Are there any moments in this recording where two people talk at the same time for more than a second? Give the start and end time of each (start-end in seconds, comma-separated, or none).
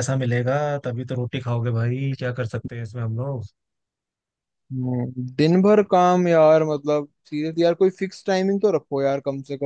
none